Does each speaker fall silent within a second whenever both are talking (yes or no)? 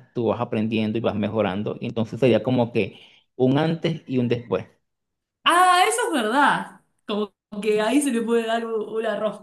yes